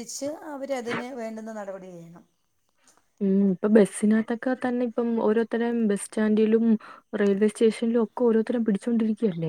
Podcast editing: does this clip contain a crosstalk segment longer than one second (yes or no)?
no